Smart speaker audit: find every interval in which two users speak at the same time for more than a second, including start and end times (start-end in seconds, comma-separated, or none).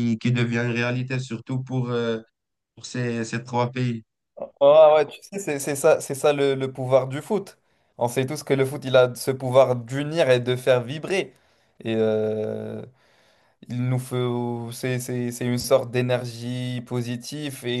none